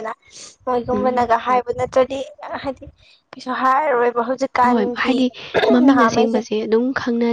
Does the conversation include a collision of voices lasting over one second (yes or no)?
no